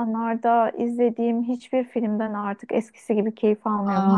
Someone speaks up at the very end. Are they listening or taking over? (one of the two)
taking over